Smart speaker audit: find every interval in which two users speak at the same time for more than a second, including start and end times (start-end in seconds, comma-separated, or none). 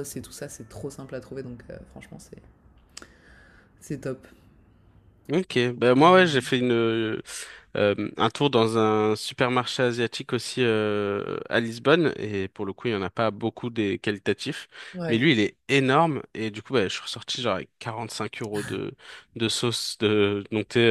none